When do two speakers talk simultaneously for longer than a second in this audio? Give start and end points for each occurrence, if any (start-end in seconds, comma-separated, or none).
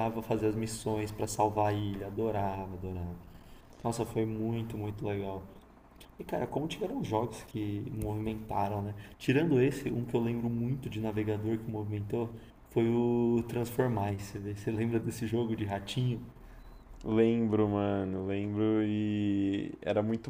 none